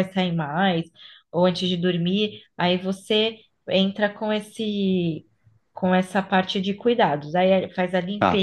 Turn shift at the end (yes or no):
no